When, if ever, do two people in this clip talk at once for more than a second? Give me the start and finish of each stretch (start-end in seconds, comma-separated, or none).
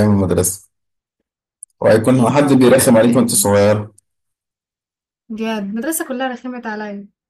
2.1-3.5